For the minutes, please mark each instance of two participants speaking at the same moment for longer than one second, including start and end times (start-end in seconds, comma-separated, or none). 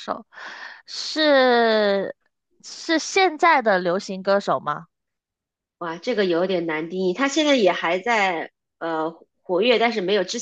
none